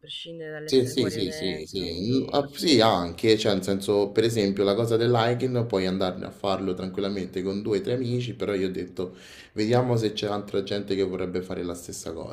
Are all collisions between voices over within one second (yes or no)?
no